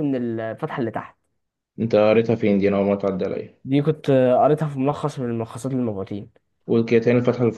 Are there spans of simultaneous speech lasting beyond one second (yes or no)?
no